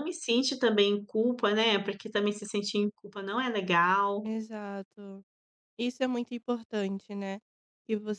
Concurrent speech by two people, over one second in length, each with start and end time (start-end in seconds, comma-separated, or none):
none